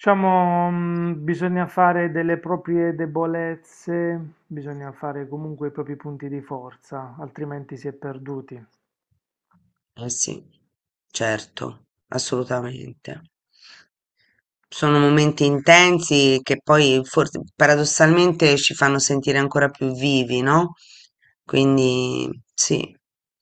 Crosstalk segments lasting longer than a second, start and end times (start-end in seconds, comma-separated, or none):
none